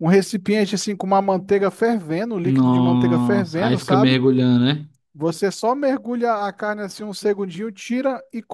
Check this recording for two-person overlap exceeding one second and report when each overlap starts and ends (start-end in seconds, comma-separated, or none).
2.4-4.2